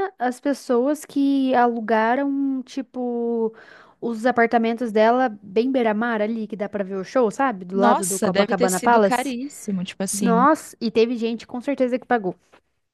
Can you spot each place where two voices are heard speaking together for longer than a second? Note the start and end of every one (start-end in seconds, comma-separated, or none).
7.7-9.4